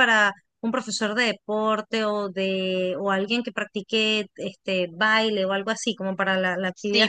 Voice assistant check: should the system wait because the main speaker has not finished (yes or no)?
no